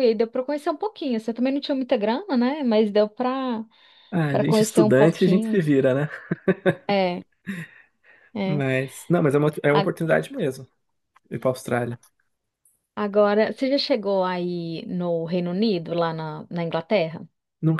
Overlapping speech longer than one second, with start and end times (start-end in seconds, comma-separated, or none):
4.3-5.7